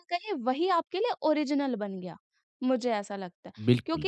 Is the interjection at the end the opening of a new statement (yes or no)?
no